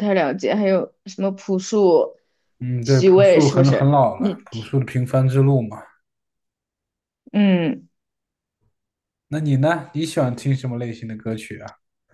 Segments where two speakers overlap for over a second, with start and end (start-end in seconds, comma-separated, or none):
2.8-4.7